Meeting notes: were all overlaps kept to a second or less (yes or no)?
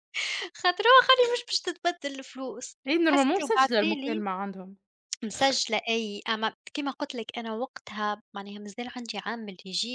no